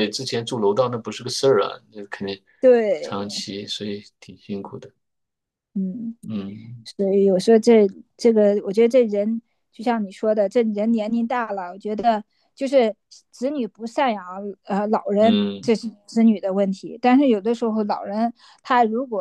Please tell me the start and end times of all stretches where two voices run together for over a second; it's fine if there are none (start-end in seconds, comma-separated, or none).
none